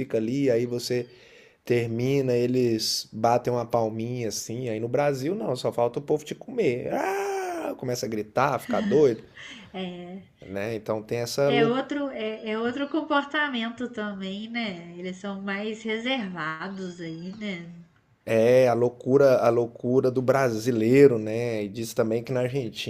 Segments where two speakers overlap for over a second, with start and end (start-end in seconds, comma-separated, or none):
none